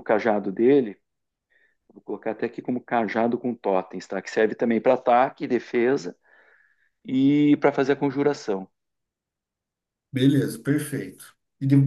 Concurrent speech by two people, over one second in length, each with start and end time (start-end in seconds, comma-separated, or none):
none